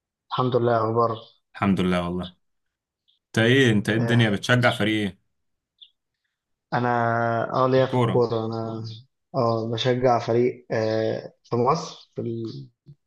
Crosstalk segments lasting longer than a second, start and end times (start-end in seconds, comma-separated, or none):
none